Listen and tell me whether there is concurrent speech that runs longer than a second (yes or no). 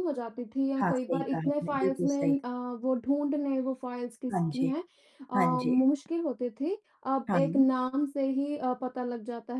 yes